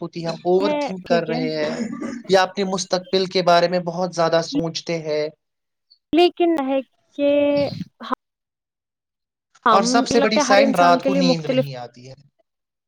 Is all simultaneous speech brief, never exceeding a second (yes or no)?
no